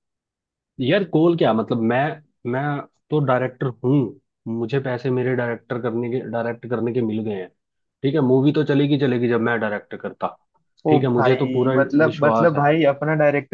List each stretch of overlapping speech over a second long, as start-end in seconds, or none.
10.9-12.6